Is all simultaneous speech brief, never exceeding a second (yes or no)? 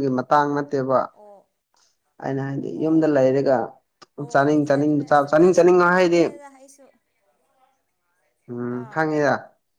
no